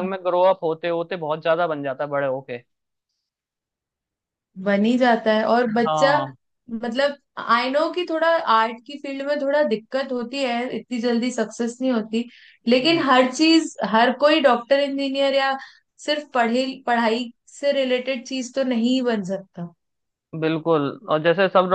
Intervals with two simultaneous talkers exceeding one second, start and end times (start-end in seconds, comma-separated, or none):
none